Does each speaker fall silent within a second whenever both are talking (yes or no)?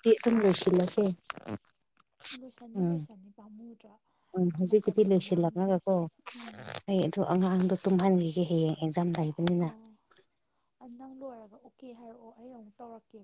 yes